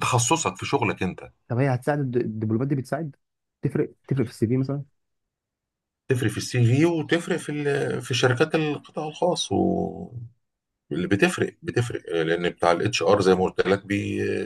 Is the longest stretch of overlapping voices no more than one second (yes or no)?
yes